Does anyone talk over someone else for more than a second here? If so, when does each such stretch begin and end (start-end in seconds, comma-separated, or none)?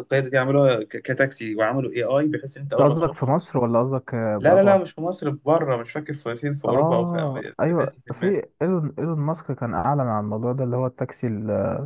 6.7-8.3